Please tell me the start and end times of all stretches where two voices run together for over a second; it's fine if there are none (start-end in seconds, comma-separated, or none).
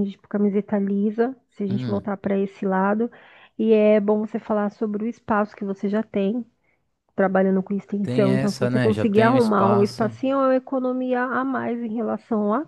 8.0-10.1